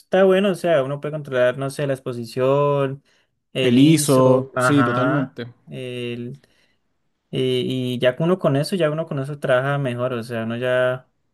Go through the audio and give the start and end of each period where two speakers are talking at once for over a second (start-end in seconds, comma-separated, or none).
3.6-5.5